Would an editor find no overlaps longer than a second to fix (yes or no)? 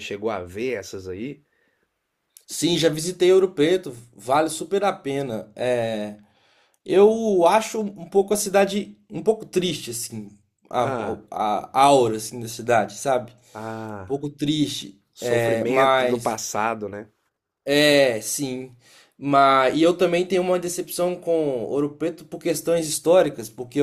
no